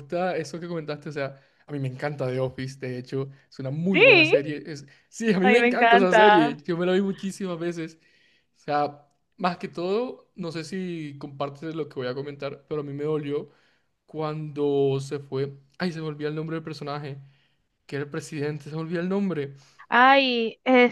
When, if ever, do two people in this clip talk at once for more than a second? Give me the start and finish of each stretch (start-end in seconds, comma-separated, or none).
5.4-6.6